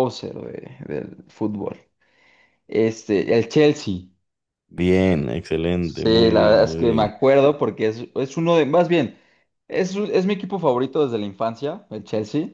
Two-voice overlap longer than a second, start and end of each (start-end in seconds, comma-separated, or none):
5.8-7.2